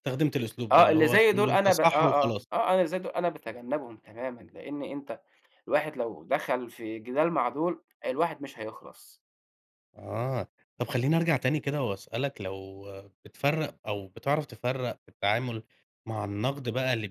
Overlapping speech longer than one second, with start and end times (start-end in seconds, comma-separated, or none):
0.7-2.5